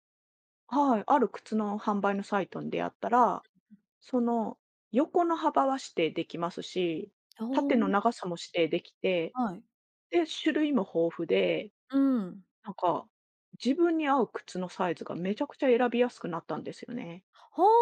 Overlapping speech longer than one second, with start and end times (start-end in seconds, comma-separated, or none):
none